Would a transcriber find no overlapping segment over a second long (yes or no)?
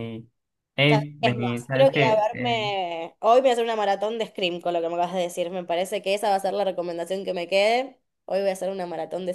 no